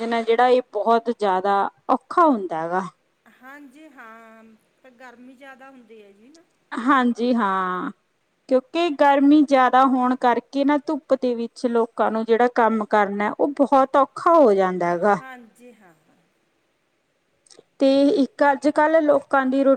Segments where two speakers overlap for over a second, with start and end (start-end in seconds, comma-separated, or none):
none